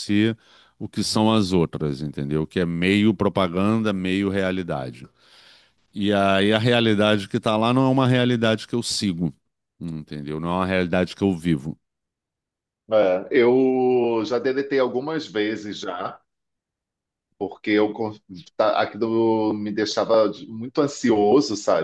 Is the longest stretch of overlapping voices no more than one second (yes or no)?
yes